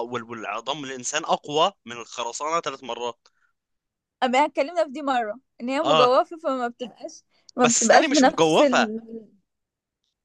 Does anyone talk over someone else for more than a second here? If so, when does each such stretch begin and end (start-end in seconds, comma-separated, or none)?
7.6-8.9